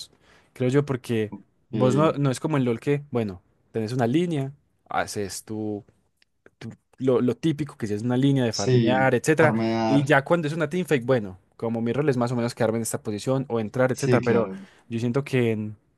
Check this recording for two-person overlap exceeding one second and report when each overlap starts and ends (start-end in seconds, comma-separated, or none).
8.5-10.1